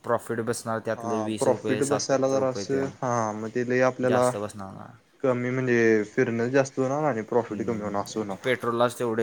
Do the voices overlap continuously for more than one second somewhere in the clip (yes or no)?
yes